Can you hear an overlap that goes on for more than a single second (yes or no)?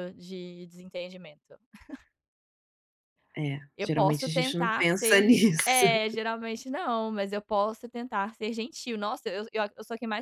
yes